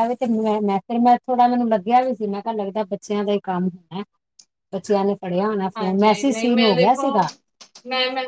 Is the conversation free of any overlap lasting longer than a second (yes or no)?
no